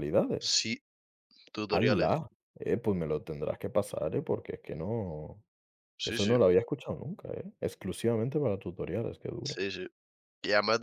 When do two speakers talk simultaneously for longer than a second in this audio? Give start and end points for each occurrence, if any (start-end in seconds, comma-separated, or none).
none